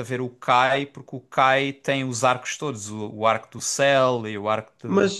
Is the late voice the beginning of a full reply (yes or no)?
yes